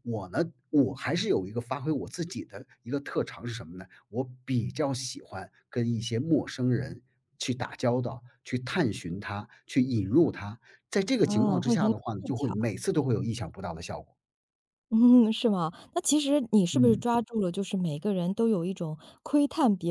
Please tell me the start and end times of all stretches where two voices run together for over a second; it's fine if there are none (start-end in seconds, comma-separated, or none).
11.2-12.7